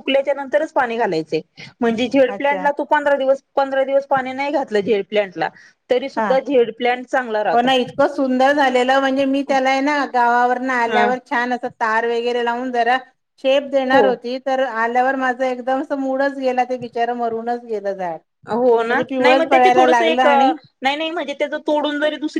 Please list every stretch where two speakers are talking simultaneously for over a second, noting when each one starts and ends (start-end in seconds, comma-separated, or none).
18.9-20.5